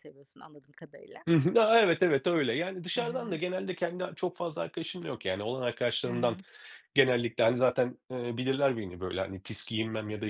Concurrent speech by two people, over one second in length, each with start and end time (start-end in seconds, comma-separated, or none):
none